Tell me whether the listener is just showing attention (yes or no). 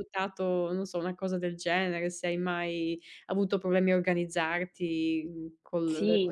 no